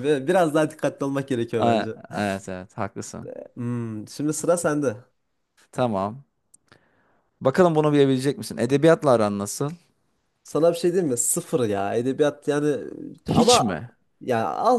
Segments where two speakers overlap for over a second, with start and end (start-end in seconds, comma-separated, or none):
none